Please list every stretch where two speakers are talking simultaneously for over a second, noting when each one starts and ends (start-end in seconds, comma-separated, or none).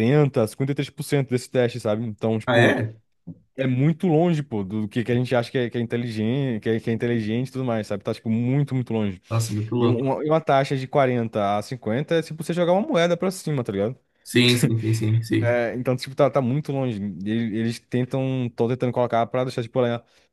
none